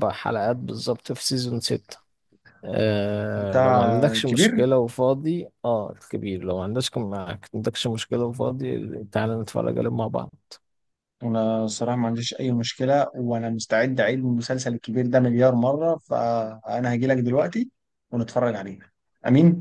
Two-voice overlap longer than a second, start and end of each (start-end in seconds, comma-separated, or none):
3.4-4.6